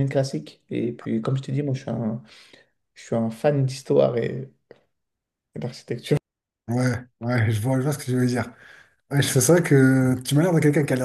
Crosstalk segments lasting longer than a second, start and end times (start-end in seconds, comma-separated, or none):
none